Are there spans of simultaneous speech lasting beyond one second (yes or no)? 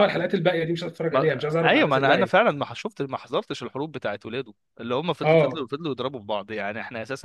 yes